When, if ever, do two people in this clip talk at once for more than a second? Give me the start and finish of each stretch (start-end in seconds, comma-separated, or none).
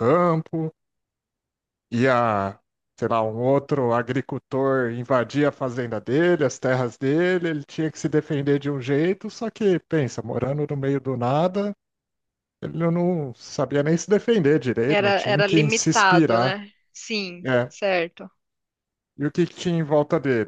14.9-16.6